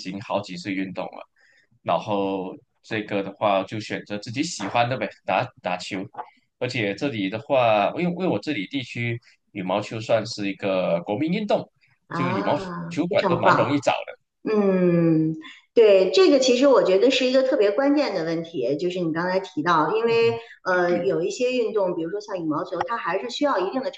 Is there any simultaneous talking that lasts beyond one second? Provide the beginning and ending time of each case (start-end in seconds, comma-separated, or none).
12.1-13.8